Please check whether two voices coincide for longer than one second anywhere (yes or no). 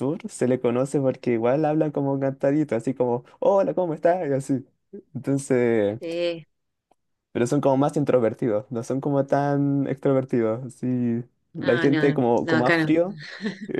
yes